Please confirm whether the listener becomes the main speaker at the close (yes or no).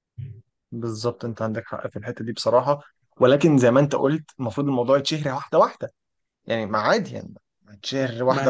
yes